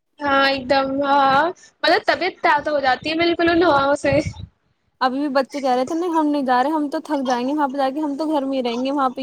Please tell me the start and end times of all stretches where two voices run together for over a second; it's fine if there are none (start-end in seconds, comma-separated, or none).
none